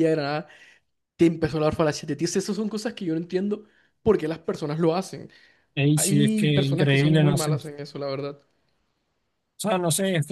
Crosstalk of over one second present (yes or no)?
yes